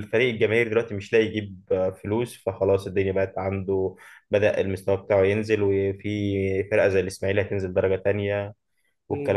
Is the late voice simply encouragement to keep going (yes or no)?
no